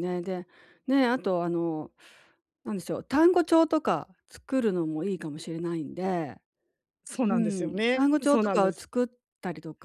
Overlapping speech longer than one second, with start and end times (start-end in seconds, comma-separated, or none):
7.3-8.9